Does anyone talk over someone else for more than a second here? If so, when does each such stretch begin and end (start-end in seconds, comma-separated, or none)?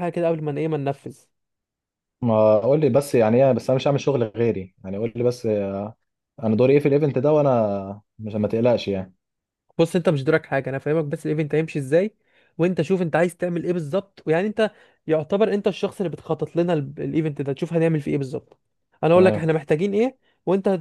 none